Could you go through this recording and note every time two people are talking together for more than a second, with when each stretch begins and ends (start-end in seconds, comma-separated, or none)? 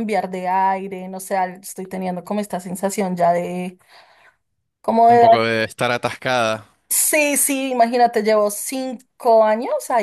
none